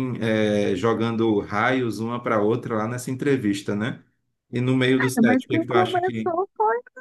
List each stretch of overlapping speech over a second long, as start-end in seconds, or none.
5.0-6.3